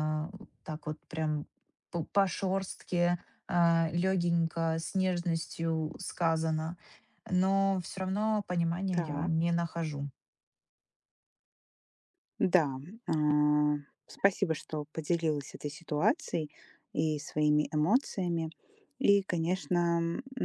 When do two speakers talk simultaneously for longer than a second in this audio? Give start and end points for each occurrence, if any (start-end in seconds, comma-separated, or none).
none